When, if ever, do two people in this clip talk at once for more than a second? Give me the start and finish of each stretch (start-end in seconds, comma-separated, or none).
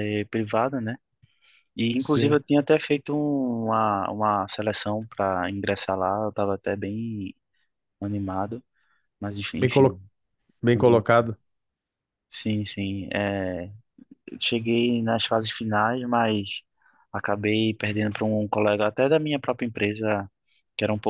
none